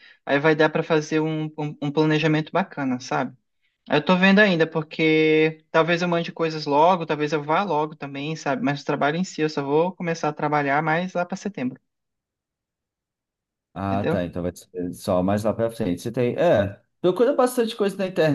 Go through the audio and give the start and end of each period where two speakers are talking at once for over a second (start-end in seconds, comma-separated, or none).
none